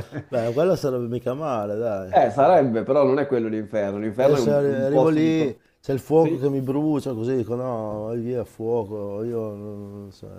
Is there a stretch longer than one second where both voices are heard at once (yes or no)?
yes